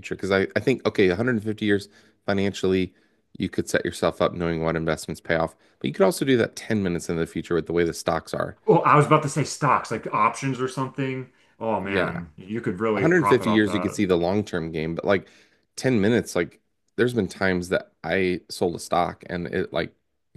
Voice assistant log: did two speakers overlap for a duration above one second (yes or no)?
yes